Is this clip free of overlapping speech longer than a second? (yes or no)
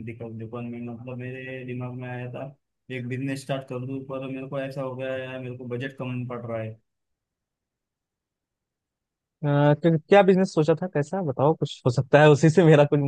yes